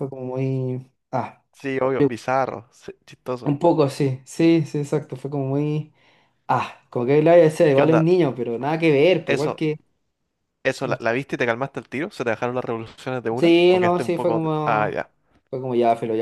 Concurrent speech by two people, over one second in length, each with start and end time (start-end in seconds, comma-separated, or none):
13.4-15.0